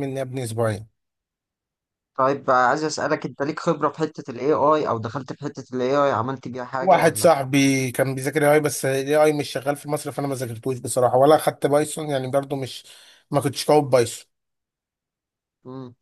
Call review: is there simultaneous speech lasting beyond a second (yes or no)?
no